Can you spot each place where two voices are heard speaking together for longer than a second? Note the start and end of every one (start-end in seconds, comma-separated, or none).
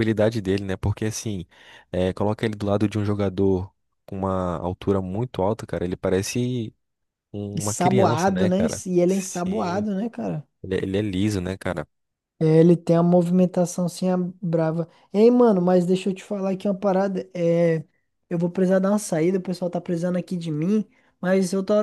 7.6-9.9